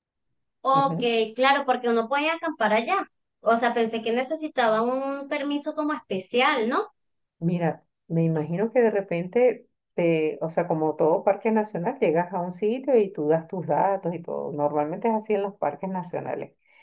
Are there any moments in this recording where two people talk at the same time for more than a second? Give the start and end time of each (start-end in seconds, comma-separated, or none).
none